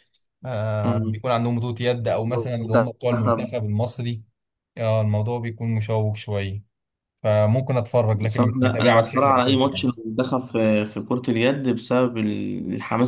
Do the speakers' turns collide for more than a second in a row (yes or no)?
yes